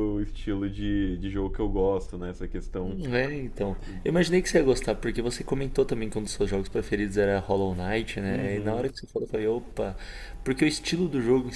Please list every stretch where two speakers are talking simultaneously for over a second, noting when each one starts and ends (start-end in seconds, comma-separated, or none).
none